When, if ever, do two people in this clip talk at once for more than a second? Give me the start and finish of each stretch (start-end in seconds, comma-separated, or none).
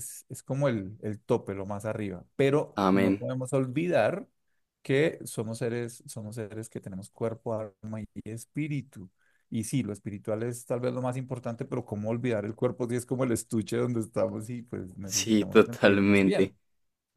15.1-16.5